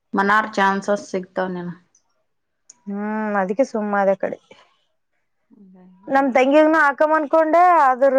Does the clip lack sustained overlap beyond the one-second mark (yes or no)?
yes